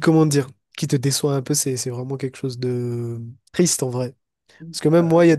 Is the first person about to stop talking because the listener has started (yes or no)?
no